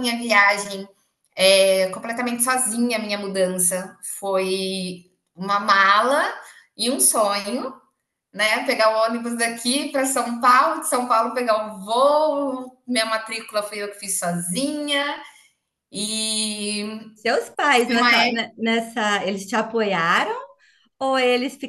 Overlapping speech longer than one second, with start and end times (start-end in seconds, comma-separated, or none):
none